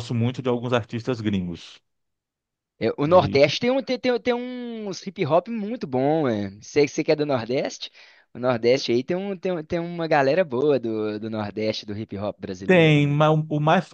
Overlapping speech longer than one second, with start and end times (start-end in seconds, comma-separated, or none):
none